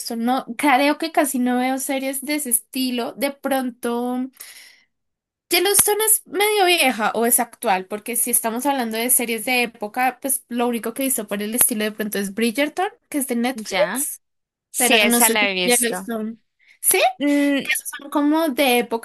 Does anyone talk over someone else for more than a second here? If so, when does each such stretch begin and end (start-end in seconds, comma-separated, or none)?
14.8-16.1